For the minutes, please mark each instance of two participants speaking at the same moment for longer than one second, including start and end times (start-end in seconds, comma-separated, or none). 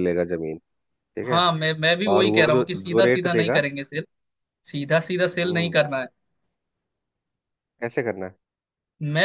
2.1-3.6